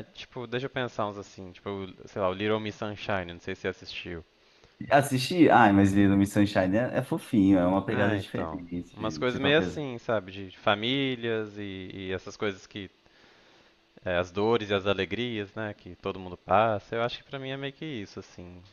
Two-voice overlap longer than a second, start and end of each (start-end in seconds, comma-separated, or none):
7.9-9.8